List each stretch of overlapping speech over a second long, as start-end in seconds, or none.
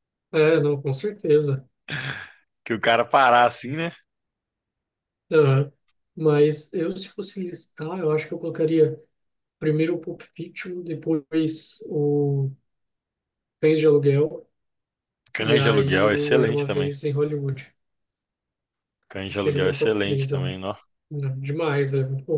15.4-16.9, 19.3-20.6